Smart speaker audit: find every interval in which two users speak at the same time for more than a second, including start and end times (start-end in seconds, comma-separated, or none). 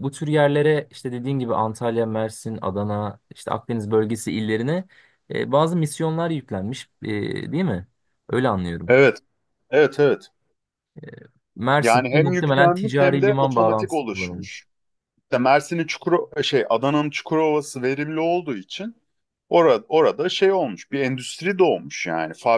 11.8-14.6